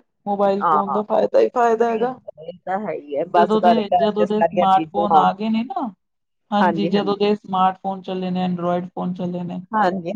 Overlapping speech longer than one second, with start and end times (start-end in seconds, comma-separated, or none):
3.4-5.2